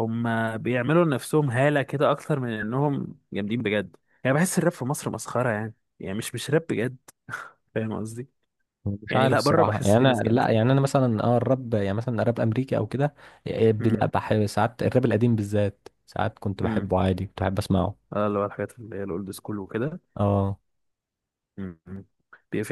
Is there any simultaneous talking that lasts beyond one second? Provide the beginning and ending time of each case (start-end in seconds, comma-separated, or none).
9.1-10.6